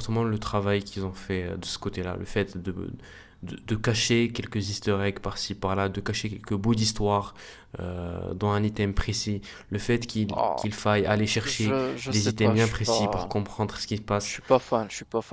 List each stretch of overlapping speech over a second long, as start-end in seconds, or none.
11.4-13.4